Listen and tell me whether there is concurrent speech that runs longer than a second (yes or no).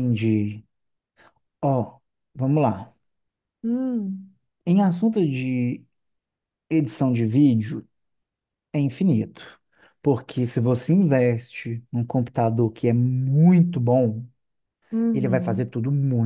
no